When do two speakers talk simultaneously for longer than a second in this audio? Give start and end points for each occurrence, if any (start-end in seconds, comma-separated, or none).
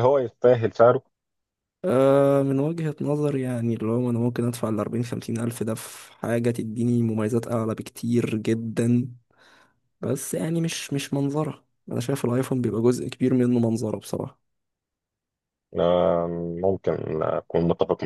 none